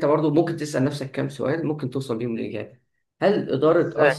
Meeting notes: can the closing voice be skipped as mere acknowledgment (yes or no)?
yes